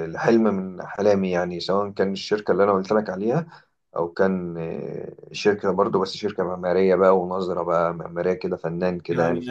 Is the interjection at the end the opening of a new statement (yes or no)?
yes